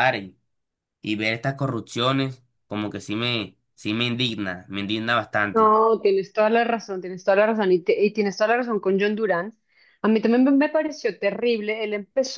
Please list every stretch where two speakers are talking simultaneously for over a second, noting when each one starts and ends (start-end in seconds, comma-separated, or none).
none